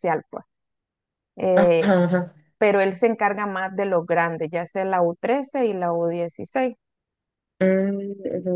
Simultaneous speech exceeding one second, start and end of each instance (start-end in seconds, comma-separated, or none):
none